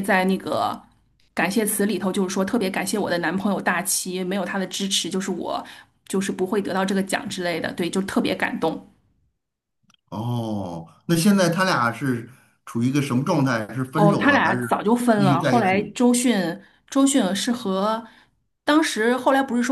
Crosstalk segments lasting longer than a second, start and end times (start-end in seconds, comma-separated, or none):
13.9-15.9